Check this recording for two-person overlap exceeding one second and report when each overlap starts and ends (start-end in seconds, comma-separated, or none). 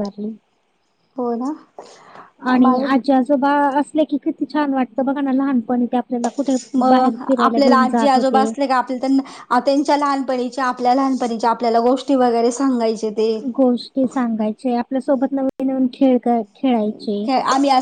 none